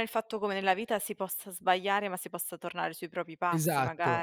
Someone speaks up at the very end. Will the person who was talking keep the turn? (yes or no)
no